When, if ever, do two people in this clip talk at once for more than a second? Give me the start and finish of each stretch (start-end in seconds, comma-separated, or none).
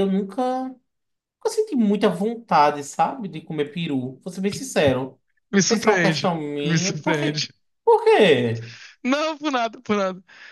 5.7-7.5